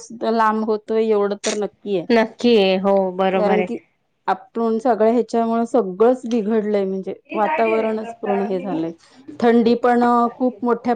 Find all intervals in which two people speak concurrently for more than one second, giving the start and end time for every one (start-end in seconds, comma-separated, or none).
none